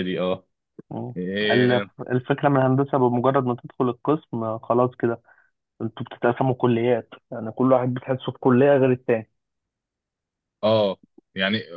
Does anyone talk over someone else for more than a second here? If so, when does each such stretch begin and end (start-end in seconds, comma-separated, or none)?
none